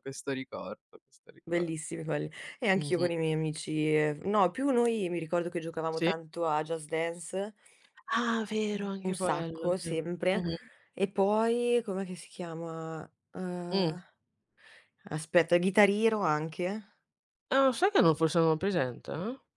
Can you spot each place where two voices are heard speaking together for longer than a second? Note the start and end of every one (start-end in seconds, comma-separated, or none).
8.7-10.4